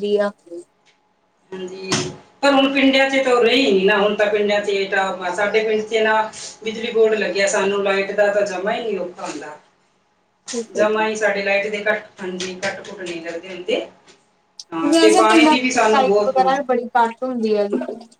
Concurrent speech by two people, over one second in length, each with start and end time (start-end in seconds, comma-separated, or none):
14.9-16.5